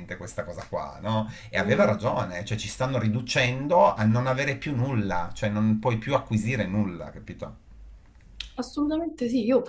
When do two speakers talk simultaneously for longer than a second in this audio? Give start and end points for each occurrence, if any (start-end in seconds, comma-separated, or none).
none